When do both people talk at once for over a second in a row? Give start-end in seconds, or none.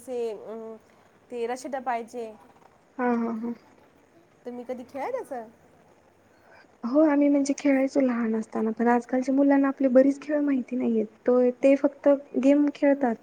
none